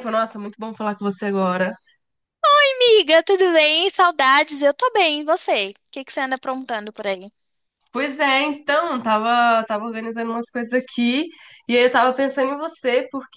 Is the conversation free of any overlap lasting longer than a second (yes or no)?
yes